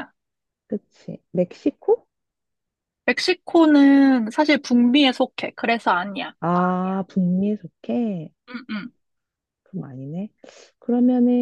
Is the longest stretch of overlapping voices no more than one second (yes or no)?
yes